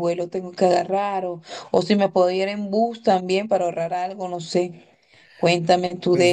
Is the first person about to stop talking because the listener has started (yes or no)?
yes